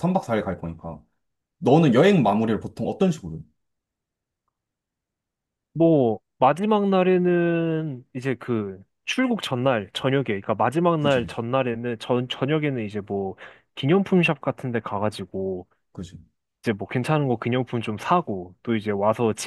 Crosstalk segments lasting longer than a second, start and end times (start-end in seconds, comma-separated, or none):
none